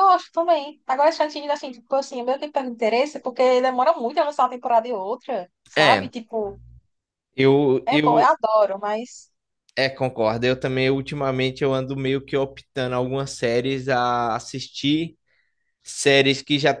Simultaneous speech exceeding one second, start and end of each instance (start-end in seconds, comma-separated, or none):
none